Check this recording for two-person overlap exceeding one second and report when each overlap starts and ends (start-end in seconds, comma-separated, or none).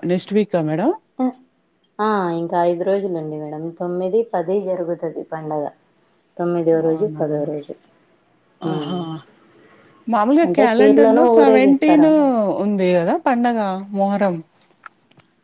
10.5-12.1